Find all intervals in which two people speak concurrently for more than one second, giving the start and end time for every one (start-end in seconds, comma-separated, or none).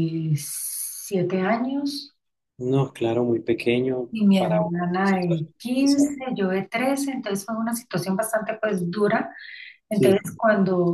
4.1-6.1